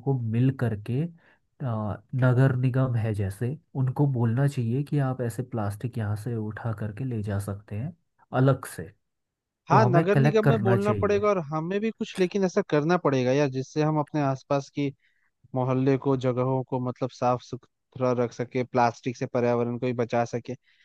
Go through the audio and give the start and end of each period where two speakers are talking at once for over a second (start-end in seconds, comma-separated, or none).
9.7-11.2